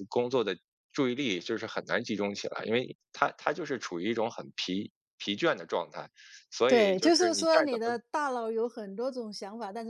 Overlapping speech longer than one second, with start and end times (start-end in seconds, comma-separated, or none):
6.7-8.0